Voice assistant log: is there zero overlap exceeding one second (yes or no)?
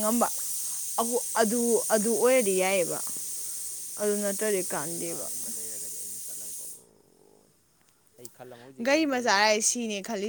yes